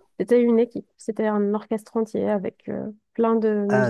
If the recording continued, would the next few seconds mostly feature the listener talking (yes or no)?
no